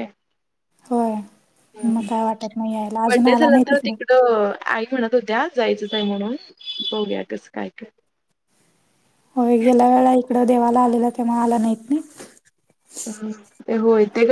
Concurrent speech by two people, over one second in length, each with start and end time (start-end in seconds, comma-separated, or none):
1.9-3.6